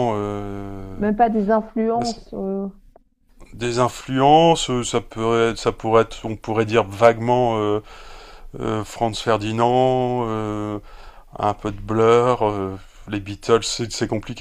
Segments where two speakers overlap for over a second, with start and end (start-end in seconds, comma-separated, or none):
none